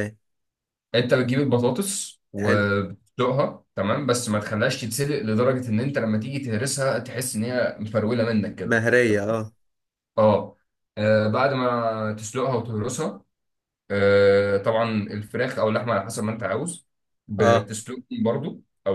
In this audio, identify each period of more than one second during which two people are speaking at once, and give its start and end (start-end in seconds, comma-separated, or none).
none